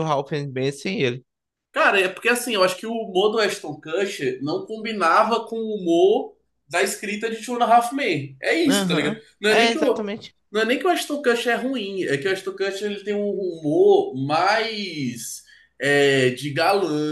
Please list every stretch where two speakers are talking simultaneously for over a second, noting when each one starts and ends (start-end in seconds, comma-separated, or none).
8.7-10.1